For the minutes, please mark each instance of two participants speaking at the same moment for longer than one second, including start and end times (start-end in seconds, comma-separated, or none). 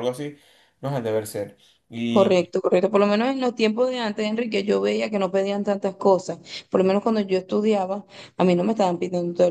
none